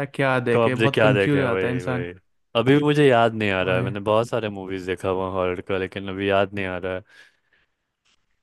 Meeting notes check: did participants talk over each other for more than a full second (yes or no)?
yes